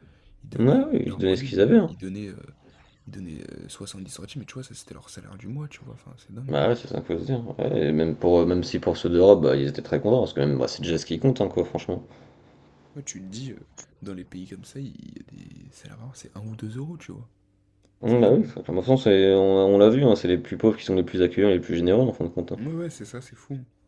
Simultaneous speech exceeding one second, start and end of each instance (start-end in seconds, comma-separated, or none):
0.6-1.9